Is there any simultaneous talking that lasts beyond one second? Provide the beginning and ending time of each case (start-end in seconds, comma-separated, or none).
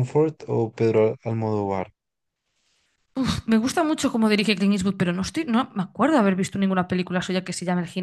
none